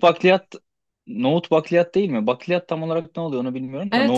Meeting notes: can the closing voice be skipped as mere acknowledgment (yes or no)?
no